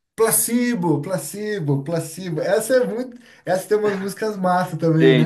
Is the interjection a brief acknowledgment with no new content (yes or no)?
no